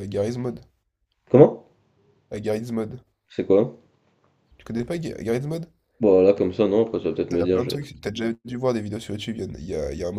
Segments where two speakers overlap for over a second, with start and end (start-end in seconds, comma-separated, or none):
none